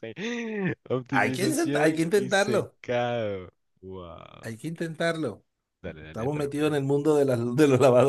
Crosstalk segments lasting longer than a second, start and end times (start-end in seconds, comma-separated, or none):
1.1-2.8